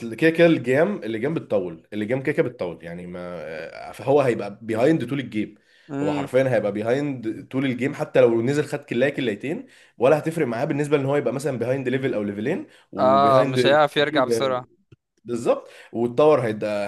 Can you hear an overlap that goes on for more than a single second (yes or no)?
yes